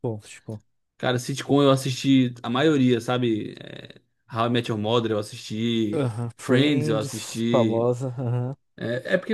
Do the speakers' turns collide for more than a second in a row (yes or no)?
yes